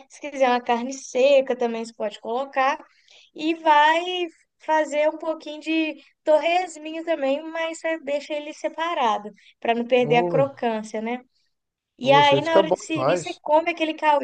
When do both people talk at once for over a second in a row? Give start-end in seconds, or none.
12.0-13.4